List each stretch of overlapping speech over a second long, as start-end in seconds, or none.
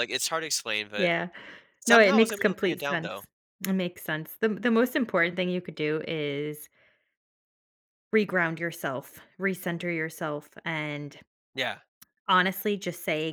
1.9-3.2